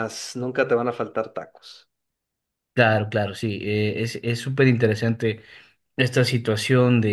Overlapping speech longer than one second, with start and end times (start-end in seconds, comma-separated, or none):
none